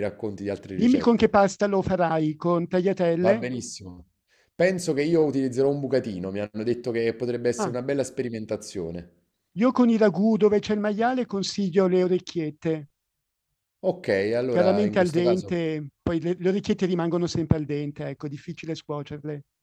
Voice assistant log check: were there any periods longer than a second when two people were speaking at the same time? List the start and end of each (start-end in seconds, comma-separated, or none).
14.5-15.7